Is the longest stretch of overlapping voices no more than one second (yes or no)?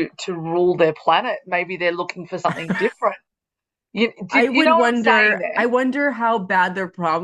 no